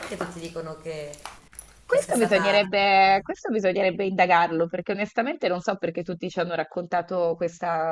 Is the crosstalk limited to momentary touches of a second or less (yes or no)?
no